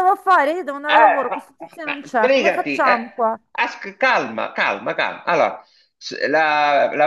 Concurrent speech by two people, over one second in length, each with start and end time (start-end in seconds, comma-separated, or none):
0.9-3.0